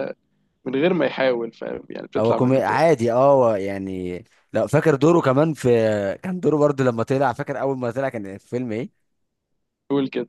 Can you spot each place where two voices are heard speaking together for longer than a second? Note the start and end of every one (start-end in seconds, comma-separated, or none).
none